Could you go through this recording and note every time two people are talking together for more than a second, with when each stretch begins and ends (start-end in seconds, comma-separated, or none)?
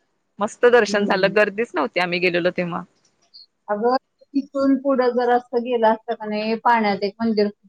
none